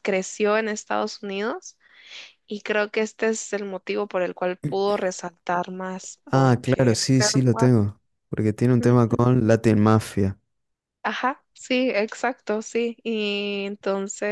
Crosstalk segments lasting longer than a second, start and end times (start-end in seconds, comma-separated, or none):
6.3-7.7